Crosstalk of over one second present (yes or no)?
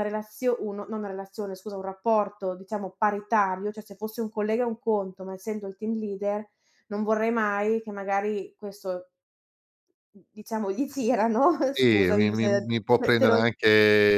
yes